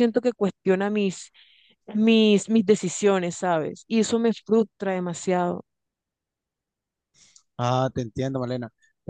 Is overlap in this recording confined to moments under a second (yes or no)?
yes